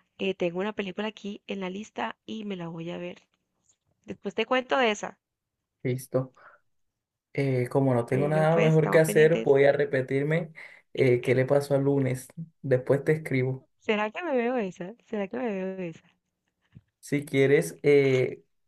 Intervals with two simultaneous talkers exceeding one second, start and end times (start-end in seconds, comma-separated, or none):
8.1-9.5